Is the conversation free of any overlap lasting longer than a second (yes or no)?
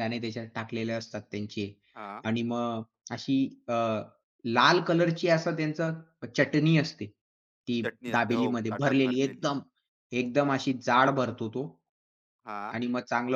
no